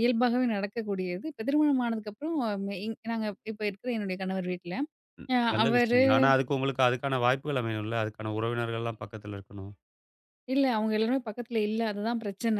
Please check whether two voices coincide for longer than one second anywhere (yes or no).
no